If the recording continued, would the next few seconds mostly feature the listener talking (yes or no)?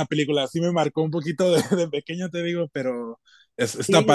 yes